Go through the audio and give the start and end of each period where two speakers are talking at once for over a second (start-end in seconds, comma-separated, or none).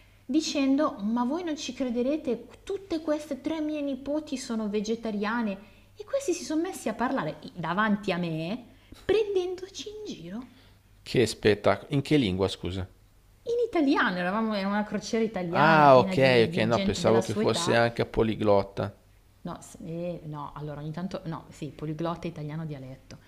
15.5-17.8